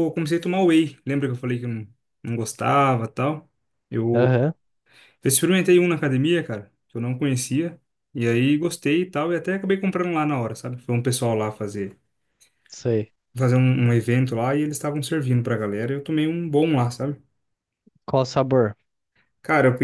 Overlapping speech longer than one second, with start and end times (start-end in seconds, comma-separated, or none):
none